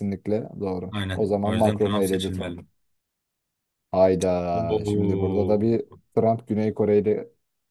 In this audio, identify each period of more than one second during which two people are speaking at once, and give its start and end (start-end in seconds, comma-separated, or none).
0.9-2.6, 4.5-6.0